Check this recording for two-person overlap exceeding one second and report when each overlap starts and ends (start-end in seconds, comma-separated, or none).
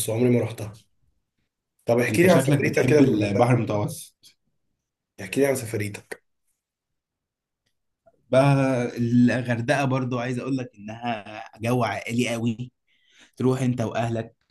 2.1-3.5